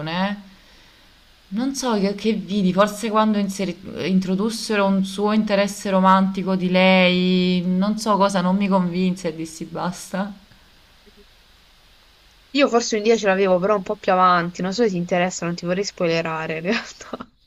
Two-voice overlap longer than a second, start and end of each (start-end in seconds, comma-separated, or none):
none